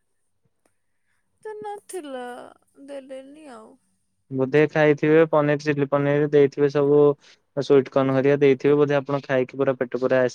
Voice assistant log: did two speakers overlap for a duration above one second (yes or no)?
no